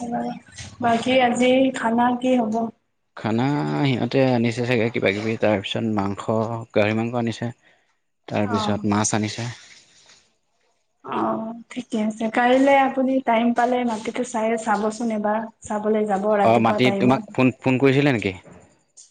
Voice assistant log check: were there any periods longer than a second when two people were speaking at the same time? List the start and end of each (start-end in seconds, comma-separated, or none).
16.5-18.3